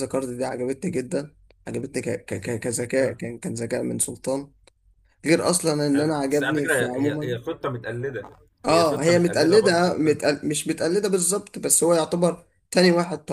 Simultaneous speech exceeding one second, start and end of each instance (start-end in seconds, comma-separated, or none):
5.8-7.4, 8.6-10.2